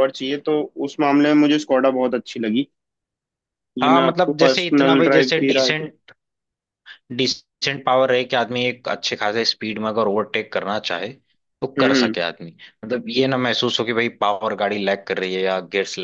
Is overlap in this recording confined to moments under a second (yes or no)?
no